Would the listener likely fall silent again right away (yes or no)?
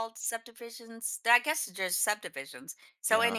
yes